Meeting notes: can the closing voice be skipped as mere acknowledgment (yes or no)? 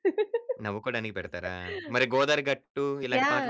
no